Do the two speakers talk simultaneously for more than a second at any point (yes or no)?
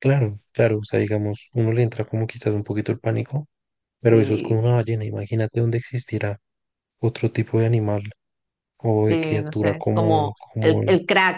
yes